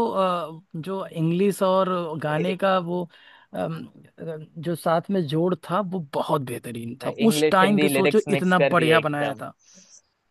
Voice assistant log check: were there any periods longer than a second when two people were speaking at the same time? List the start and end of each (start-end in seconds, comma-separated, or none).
7.2-9.4